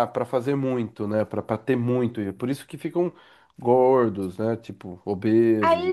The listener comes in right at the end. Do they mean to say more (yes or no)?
yes